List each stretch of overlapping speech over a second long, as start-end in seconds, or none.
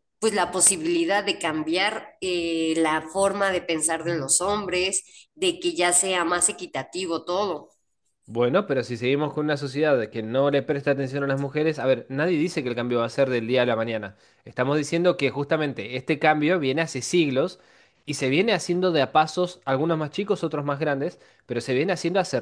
none